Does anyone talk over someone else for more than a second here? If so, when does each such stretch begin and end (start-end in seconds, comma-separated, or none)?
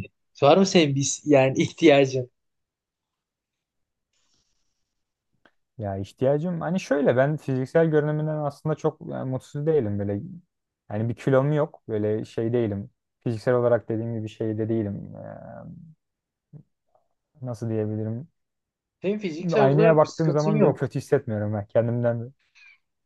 19.5-20.9